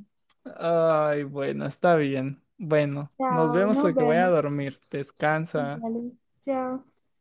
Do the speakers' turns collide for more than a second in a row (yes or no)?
yes